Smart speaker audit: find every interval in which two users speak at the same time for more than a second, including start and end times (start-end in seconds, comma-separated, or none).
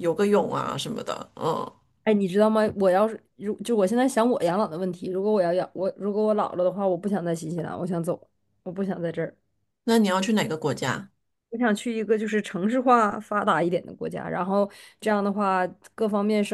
none